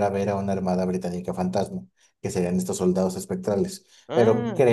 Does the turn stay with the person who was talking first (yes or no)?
yes